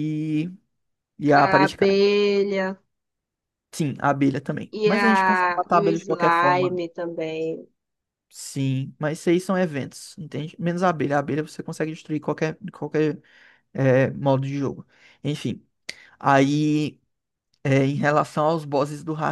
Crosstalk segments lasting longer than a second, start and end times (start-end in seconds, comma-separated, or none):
4.7-6.8